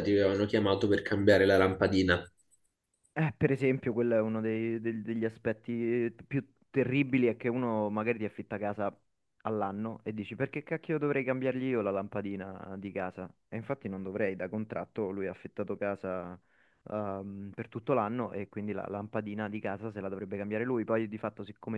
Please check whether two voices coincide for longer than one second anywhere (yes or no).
no